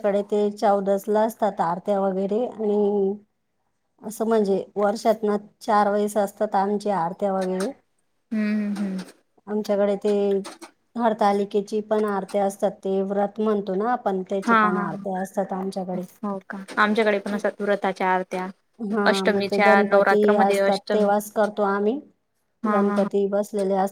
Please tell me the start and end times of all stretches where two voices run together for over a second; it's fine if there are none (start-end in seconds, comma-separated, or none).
19.1-21.1